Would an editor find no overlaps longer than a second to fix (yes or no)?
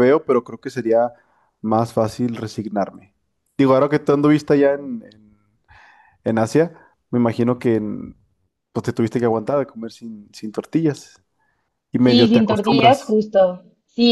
no